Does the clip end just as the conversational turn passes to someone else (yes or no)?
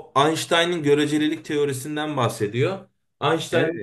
no